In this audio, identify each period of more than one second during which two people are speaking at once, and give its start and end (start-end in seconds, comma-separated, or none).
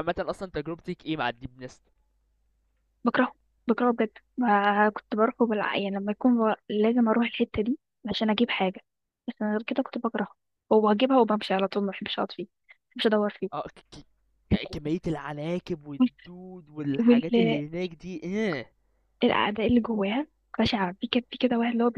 none